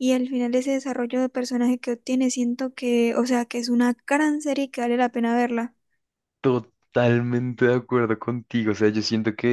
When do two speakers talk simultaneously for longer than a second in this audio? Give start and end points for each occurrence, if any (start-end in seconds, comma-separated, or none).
none